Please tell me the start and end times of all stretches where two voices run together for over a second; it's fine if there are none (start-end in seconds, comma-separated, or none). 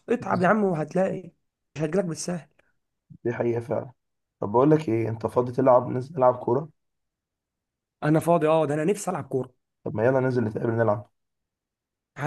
none